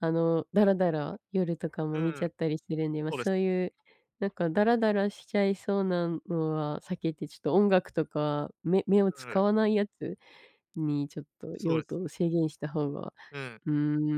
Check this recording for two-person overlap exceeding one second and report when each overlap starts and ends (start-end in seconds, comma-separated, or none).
none